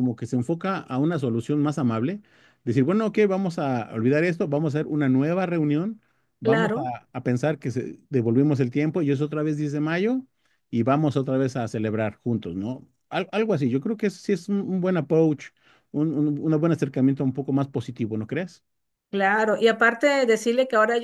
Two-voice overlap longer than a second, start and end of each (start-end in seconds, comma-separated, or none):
none